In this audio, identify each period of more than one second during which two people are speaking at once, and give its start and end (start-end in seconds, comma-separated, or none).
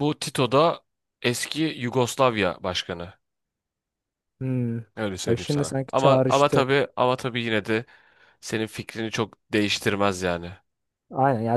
5.3-6.7